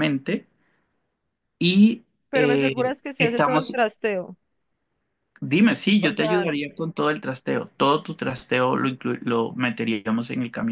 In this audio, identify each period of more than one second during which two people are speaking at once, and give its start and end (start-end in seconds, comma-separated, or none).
2.3-3.8